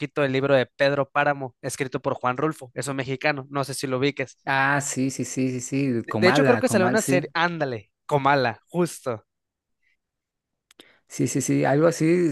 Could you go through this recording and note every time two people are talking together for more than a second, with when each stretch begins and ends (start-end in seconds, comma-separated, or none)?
6.0-7.2